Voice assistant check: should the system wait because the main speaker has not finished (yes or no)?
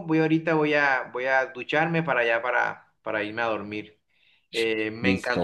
yes